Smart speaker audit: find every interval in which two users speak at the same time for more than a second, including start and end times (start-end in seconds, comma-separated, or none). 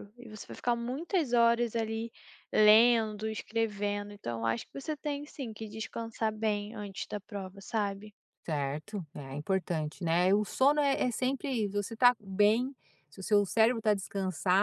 none